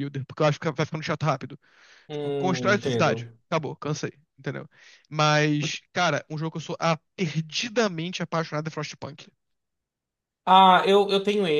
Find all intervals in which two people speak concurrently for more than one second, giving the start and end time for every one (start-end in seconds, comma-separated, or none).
2.1-3.4